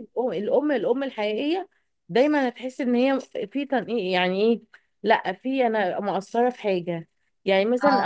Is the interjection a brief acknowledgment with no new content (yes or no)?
yes